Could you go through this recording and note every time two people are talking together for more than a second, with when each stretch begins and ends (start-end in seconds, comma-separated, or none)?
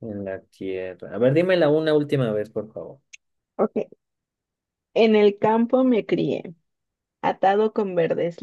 none